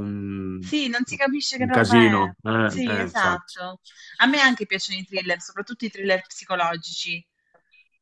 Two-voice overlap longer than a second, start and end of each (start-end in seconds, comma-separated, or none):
1.6-3.6